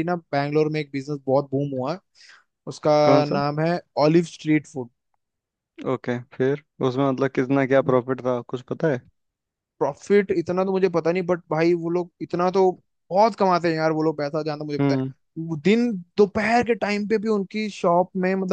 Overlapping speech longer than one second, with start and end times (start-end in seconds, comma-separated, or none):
none